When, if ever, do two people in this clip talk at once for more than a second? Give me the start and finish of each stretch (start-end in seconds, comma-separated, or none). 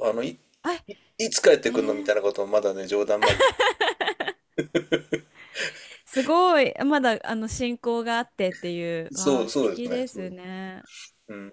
9.1-10.3